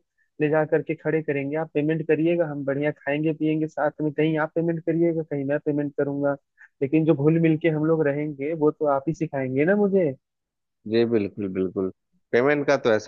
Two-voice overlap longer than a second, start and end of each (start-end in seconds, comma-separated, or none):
none